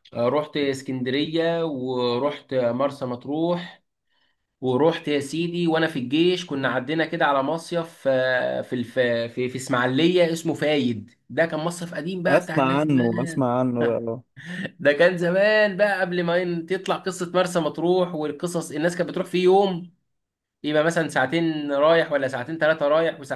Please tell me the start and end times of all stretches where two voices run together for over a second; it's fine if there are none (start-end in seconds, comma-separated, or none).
12.3-13.5